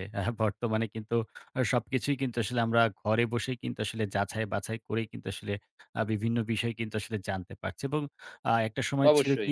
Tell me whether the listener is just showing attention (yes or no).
yes